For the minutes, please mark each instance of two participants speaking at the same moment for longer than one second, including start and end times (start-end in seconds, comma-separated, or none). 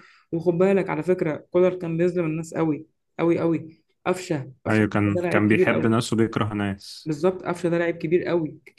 4.7-6.0